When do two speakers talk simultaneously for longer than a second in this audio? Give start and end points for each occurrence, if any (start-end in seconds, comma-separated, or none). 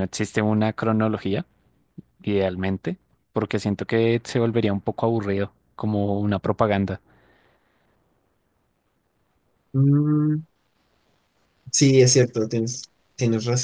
none